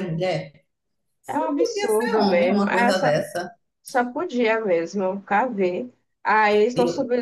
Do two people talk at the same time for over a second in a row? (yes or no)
yes